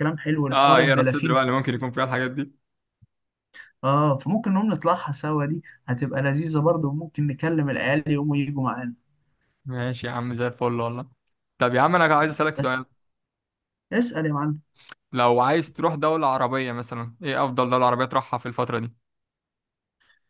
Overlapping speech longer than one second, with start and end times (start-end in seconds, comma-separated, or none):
0.5-1.9